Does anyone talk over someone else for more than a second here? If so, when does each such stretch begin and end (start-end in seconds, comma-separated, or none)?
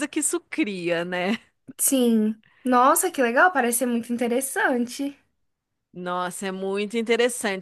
none